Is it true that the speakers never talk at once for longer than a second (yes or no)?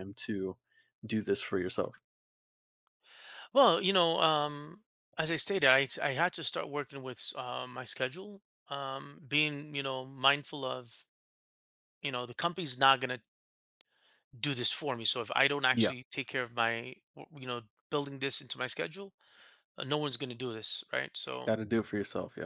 yes